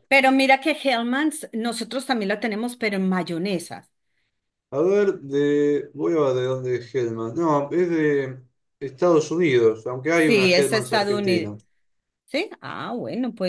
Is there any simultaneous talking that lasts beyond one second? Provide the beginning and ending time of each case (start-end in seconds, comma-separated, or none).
10.1-11.5